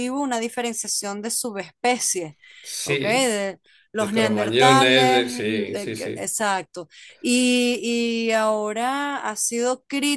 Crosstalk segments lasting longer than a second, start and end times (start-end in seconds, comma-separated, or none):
4.0-6.3